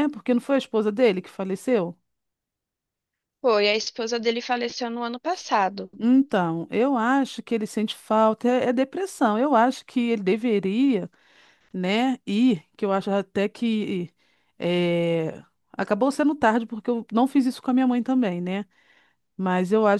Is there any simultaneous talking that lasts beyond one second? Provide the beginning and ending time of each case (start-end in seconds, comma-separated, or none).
none